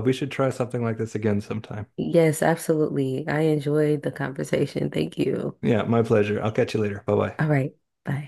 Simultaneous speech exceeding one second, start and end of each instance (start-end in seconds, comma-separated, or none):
none